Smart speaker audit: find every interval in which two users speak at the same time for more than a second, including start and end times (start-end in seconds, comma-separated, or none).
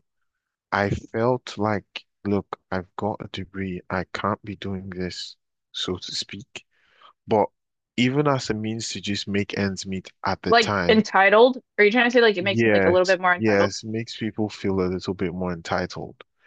12.4-13.7